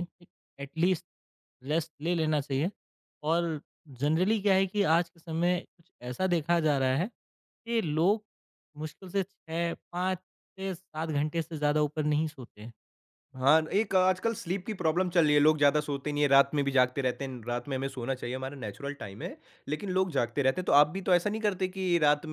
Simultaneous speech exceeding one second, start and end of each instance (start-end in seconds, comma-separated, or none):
none